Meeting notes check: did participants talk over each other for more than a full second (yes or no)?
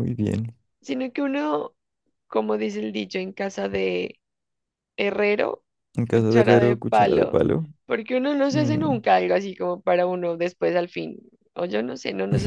yes